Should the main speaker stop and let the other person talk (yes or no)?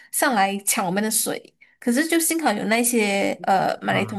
no